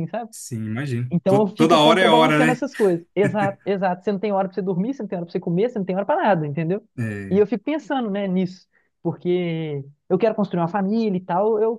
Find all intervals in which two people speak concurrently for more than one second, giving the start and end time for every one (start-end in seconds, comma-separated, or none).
1.1-2.6